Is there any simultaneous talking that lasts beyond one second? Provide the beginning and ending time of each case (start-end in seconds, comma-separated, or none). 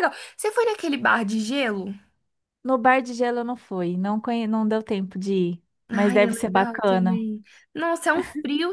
5.9-7.2